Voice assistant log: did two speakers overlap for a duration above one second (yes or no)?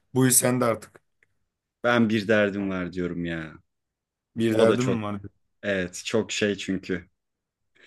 no